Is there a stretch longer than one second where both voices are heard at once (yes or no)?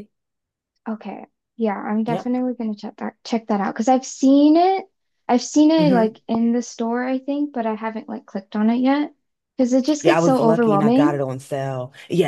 yes